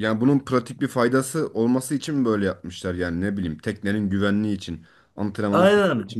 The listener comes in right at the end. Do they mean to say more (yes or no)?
yes